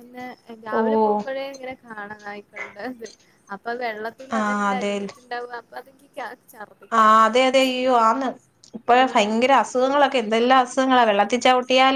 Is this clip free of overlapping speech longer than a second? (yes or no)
yes